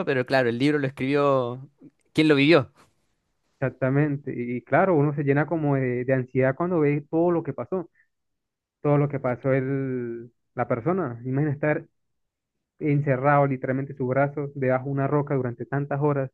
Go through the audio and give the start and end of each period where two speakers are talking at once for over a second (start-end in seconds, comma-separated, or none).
none